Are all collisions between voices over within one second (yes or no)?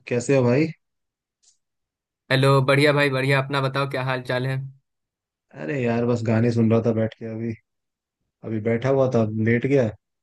yes